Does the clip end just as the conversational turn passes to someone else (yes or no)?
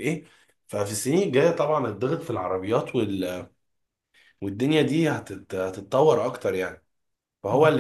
no